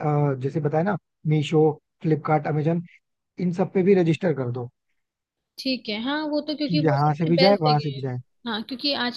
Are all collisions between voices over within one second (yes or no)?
no